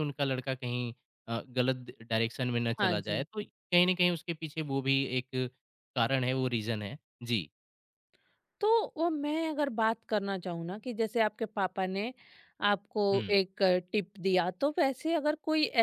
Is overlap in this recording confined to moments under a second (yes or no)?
yes